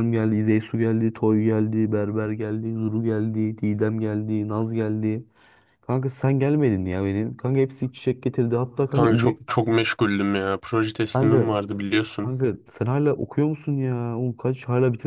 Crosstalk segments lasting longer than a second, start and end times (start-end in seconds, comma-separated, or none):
none